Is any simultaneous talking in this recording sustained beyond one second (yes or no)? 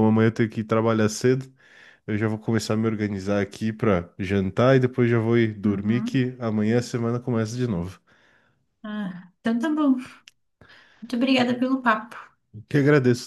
no